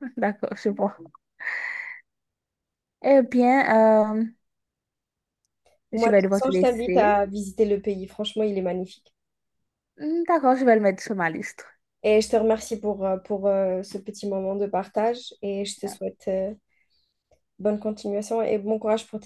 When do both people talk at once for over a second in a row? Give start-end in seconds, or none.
5.9-7.1